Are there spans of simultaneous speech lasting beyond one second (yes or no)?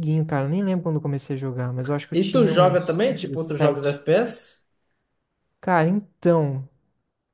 yes